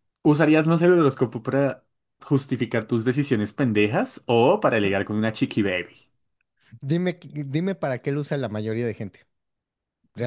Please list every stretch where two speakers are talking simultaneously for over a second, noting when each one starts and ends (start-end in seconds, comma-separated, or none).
none